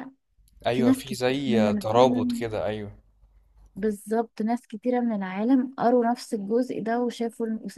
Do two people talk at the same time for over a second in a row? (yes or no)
yes